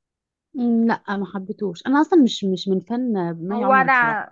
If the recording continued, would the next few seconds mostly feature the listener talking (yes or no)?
yes